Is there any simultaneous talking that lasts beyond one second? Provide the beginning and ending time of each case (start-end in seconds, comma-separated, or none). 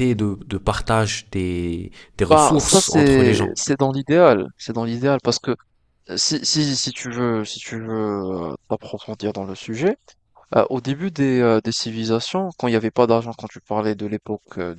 2.3-3.6